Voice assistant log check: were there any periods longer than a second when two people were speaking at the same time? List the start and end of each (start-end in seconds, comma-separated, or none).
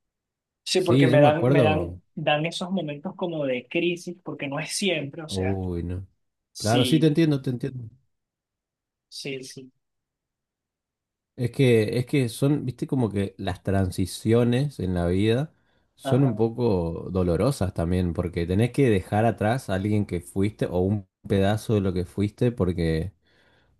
0.7-2.0